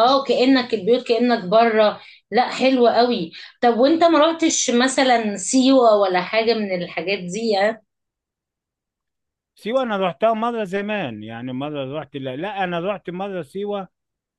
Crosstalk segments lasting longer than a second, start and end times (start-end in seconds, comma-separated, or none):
none